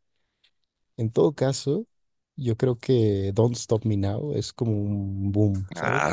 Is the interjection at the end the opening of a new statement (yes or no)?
yes